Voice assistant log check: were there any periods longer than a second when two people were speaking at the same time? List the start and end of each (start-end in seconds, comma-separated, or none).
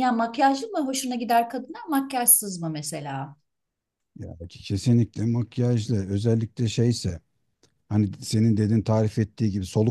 none